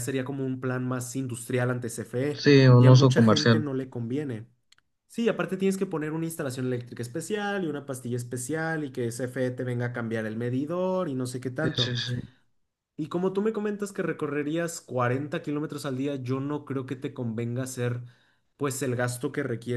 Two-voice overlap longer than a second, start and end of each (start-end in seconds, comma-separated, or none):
2.3-3.7